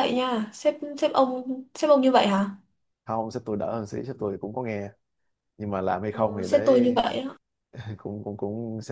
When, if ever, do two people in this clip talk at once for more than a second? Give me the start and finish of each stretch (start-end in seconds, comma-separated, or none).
none